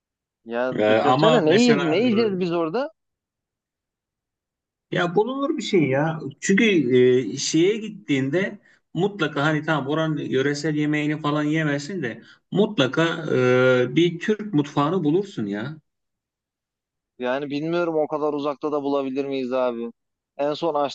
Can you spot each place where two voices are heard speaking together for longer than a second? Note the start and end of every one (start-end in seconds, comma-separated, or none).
0.7-2.0